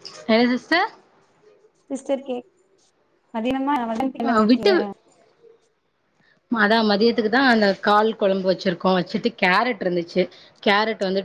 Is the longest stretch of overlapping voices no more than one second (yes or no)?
yes